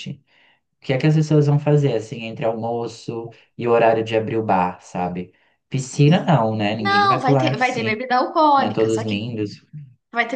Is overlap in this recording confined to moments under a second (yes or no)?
no